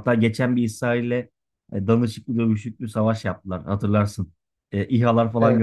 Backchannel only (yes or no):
yes